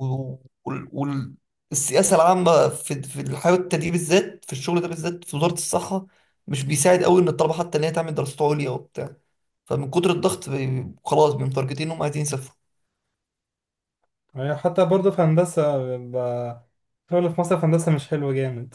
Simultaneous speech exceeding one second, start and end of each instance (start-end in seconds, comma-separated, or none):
none